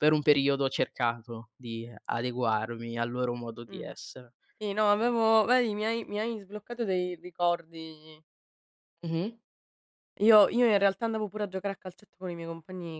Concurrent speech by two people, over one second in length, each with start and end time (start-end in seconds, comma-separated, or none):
none